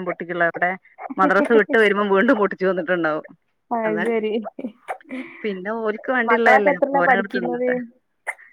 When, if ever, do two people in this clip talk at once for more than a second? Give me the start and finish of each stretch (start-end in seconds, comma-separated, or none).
6.3-7.7